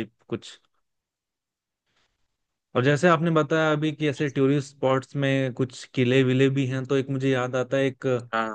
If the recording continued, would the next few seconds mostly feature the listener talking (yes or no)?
no